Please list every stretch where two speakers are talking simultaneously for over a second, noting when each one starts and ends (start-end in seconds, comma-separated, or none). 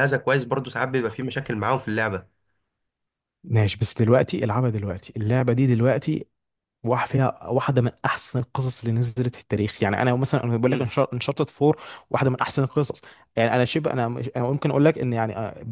none